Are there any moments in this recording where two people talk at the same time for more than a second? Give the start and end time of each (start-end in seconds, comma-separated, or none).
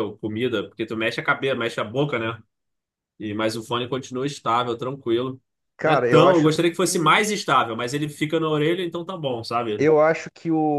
5.8-7.2